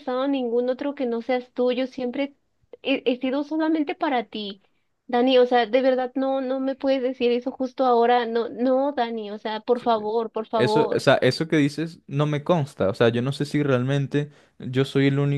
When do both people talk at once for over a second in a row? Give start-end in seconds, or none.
none